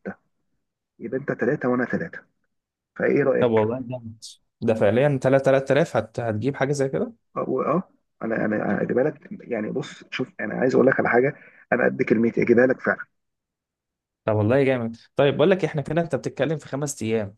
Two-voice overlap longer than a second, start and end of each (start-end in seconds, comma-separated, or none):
none